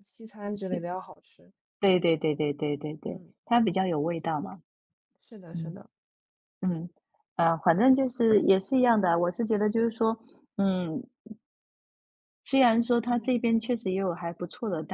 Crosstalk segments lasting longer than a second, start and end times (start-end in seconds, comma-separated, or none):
none